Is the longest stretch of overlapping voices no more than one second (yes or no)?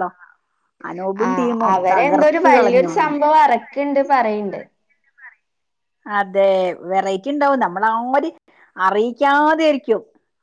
no